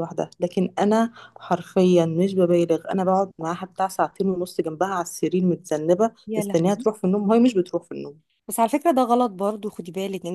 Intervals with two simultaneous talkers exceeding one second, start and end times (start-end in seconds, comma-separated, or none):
none